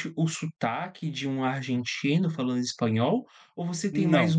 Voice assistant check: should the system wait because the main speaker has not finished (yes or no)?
yes